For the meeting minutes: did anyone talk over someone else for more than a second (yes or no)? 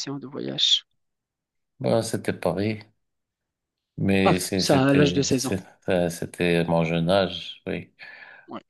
yes